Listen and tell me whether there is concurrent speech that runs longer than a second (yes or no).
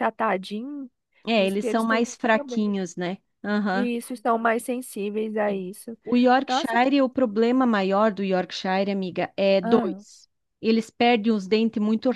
yes